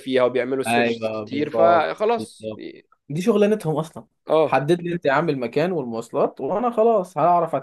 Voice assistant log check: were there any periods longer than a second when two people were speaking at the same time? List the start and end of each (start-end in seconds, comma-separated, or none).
0.7-2.7